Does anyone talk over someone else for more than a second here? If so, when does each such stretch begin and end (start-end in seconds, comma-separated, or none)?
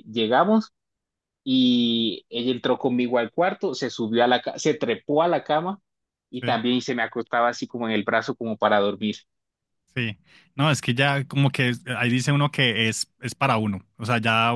none